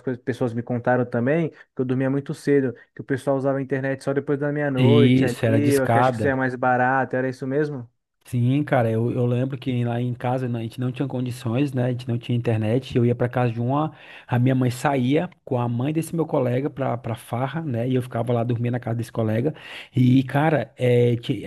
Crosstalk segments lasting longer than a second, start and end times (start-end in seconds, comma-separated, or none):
4.8-6.3